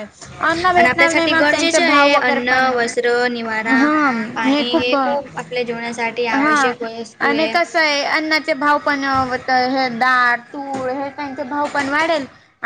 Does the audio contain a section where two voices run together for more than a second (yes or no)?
yes